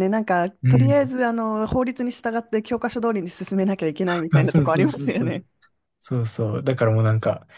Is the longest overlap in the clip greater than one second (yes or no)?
yes